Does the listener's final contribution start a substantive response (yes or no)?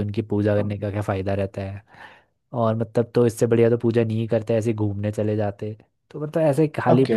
no